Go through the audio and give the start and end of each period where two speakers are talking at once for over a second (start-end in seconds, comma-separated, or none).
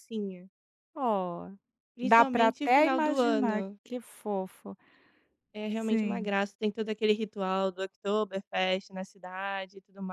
2.0-3.8